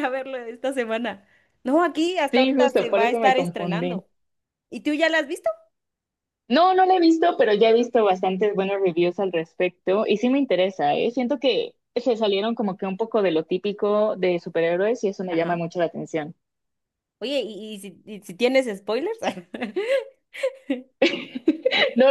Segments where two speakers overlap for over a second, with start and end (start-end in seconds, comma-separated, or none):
2.3-4.0